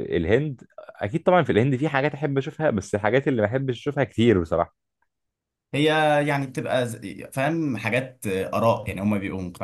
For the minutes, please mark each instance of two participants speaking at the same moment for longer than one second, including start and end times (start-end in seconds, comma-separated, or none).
none